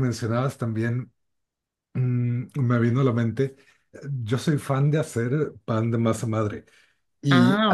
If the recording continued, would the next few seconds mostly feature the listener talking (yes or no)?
no